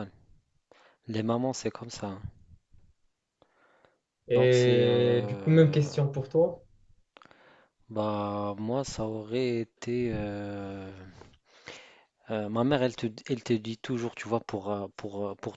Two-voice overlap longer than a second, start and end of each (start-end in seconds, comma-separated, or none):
4.3-5.8